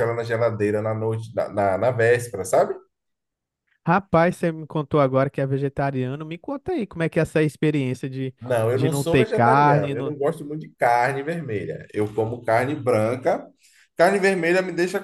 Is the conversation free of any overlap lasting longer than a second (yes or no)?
no